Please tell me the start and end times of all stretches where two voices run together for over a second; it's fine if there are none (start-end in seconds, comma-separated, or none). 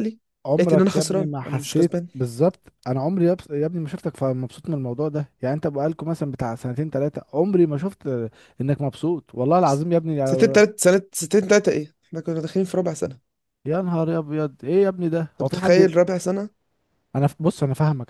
0.6-2.1